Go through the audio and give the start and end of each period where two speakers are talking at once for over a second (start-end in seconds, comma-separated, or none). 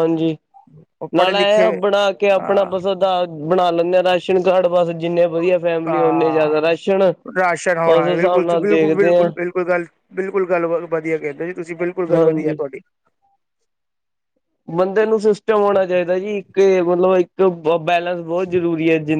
7.7-9.3